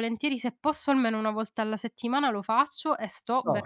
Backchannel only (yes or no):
yes